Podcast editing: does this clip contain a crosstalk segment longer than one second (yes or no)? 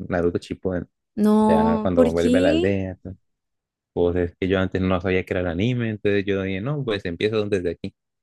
yes